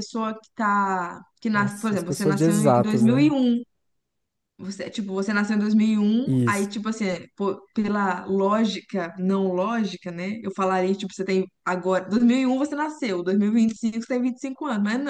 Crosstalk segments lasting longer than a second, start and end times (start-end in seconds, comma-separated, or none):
1.5-3.3